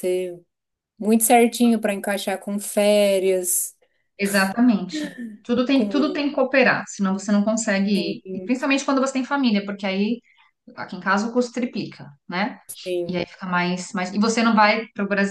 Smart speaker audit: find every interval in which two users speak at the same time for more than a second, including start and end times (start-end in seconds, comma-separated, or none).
none